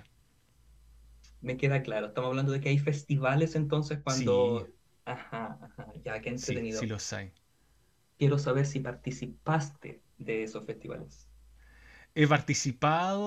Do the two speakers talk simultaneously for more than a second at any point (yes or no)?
no